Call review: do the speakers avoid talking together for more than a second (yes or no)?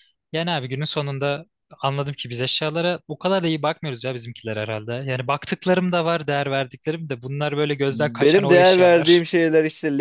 no